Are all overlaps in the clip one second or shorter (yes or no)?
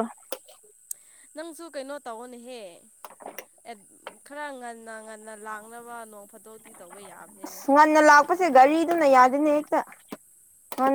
yes